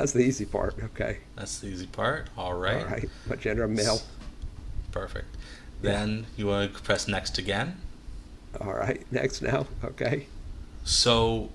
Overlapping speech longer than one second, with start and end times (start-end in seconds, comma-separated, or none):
none